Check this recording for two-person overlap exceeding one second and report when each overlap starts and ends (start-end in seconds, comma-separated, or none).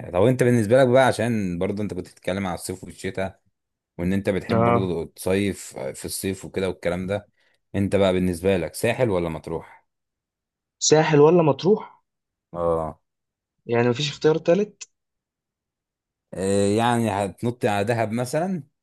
none